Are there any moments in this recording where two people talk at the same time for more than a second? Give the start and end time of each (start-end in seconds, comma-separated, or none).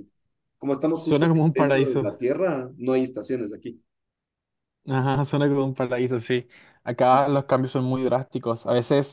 0.9-2.1